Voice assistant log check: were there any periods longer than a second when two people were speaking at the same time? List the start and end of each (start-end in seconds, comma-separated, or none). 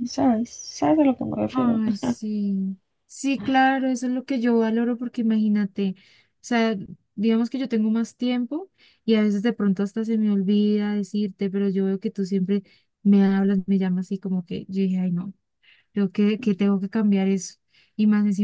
none